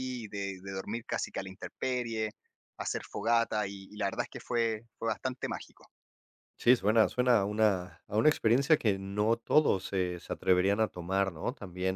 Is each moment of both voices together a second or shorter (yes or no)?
yes